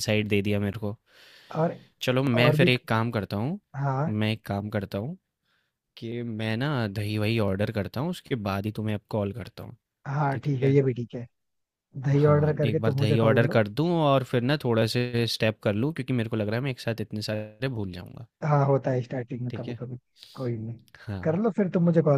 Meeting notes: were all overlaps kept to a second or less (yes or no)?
no